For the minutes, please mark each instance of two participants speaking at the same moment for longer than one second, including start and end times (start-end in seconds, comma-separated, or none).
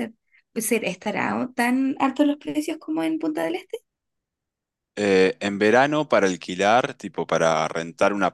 none